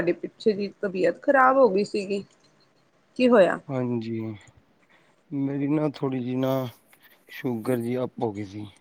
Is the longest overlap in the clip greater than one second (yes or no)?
no